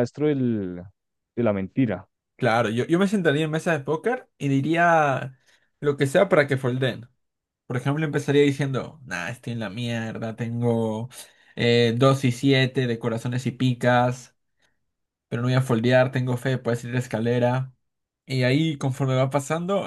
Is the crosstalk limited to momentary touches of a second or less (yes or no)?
yes